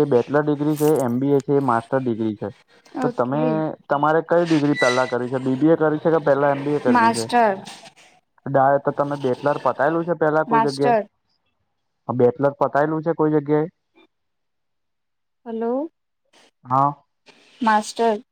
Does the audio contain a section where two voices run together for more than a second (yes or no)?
no